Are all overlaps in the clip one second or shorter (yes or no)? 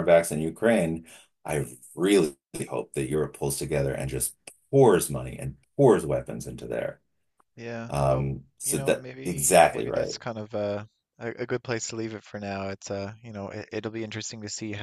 no